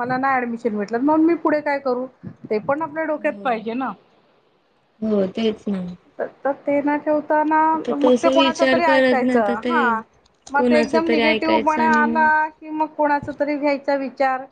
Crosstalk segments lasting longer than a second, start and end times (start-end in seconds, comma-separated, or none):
7.7-9.7, 10.5-12.4